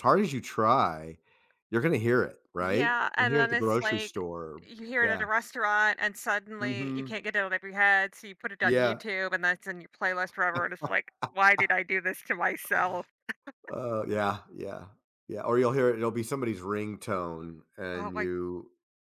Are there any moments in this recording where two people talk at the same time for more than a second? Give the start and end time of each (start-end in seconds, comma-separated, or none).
2.6-4.2